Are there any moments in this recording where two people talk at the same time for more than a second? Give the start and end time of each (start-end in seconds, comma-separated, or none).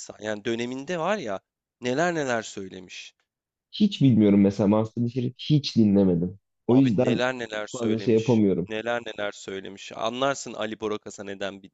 6.7-8.7